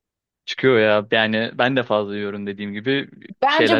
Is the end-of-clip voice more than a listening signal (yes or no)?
yes